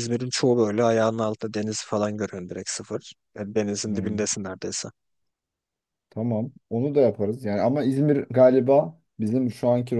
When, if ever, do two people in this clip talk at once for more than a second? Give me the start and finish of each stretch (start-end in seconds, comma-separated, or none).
none